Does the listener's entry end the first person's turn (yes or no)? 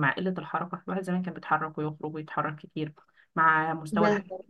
no